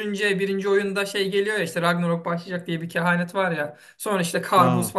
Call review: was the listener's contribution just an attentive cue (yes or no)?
yes